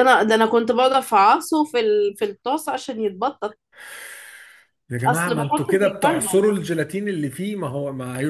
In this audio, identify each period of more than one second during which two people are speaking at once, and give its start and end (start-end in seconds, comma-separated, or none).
5.1-6.5